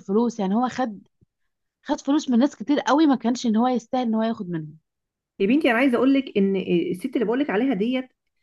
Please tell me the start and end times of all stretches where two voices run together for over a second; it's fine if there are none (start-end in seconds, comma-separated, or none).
none